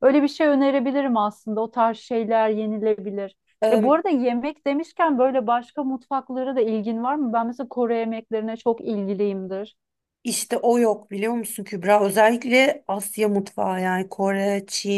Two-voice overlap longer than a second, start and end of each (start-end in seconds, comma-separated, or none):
none